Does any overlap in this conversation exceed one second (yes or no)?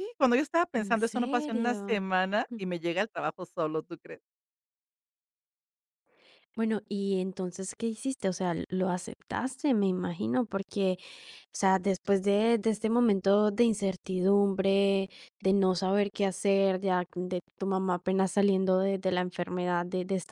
yes